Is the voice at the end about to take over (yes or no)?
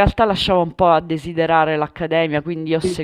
no